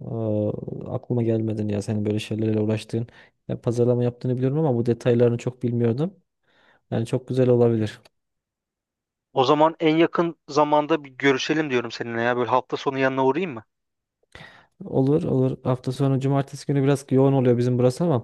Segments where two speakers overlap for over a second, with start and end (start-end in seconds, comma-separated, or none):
none